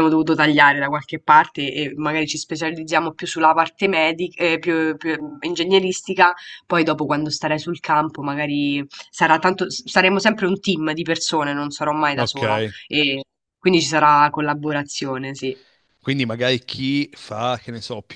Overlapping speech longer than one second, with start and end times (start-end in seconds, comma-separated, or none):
none